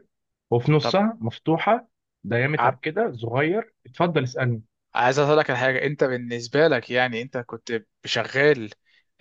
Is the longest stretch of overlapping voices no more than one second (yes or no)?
yes